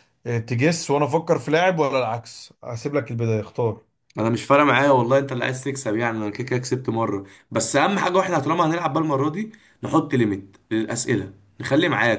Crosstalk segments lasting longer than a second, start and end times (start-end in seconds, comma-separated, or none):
none